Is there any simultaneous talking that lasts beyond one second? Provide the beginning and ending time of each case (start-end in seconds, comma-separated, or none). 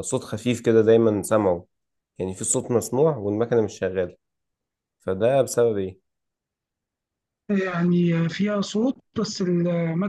none